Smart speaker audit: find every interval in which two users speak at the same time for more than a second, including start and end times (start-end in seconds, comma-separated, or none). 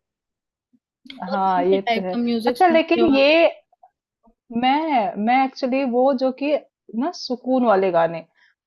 1.3-3.3